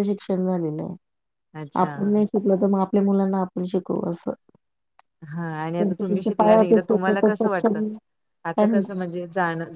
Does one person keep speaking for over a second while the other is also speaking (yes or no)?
yes